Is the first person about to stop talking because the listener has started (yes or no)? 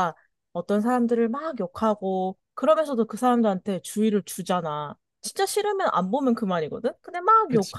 no